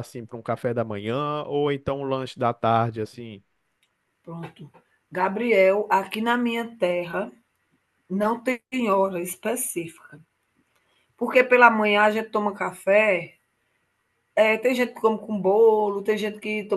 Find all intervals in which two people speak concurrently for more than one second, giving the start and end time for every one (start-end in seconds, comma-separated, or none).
none